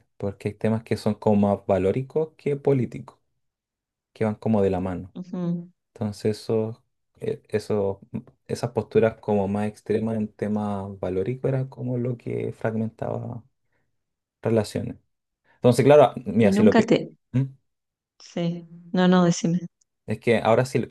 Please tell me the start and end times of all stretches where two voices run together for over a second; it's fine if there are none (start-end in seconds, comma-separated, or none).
none